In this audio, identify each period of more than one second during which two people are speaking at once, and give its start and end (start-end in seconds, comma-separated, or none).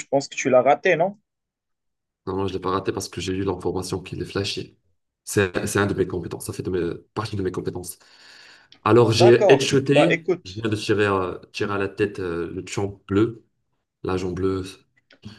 9.1-10.7